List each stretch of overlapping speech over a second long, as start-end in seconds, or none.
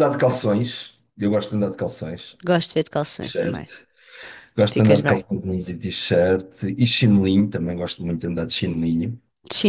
none